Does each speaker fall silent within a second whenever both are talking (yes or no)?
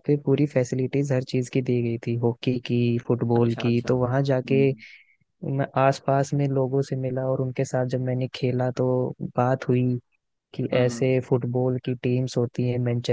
no